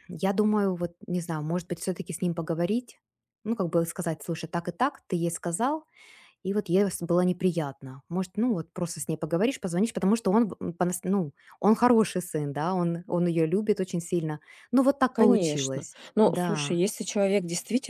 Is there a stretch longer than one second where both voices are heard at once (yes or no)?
yes